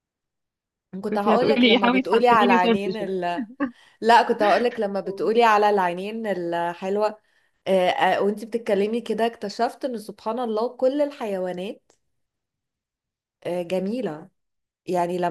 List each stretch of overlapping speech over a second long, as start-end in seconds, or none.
1.1-3.1